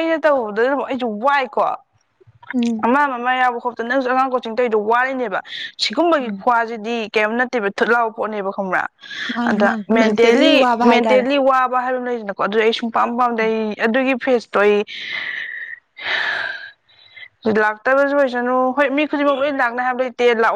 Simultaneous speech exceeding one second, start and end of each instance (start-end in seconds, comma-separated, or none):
9.4-11.3